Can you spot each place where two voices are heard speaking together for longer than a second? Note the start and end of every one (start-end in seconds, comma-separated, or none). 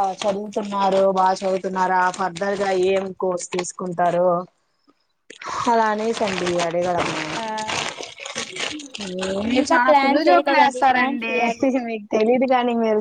9.6-11.3